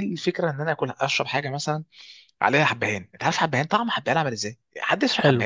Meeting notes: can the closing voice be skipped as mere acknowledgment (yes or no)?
no